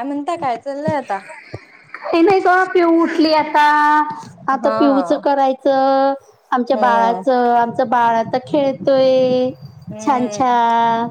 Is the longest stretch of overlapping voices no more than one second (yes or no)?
yes